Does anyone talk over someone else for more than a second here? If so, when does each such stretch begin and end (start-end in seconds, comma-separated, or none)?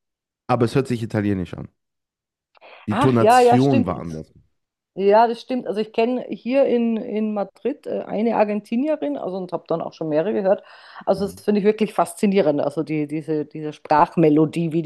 2.9-4.2